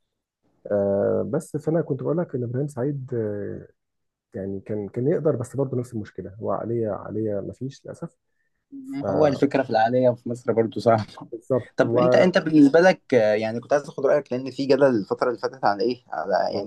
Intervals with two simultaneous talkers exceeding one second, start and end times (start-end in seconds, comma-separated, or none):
none